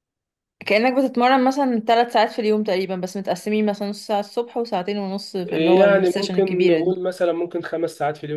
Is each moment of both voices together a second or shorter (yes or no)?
no